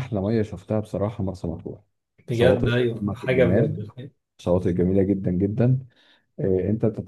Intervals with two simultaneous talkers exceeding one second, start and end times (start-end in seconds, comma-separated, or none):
2.3-3.8